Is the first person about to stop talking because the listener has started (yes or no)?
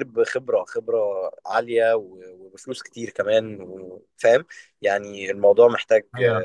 yes